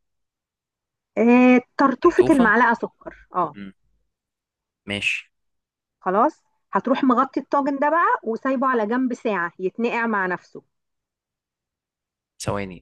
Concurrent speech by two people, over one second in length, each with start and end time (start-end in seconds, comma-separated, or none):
none